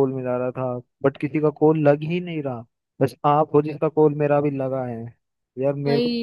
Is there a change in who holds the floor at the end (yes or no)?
no